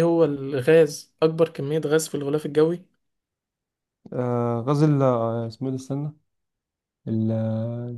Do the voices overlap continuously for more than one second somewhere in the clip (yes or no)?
no